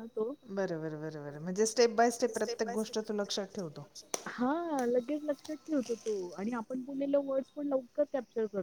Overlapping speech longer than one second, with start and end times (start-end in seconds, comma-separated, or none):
1.4-3.9